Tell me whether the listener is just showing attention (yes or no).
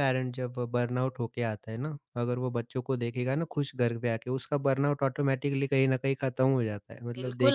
no